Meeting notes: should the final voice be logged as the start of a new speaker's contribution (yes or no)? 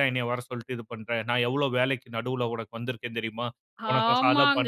yes